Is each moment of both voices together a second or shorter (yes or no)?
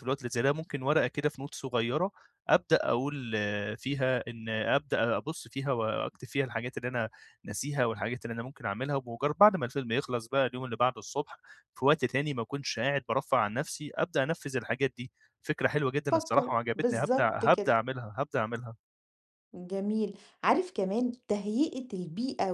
no